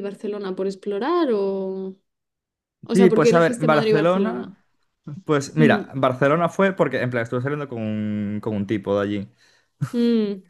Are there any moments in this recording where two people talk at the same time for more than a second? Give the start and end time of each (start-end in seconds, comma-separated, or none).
2.9-4.5